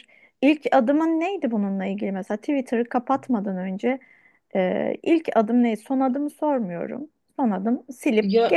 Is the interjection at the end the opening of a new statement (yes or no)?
no